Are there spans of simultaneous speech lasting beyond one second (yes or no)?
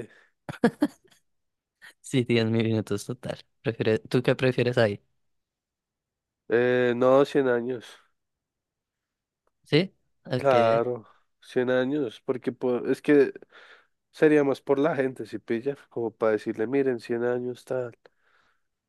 no